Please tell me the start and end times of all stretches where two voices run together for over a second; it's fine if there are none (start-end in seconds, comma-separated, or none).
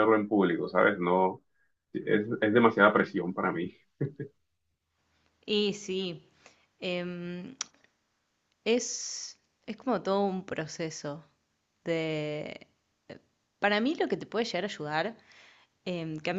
none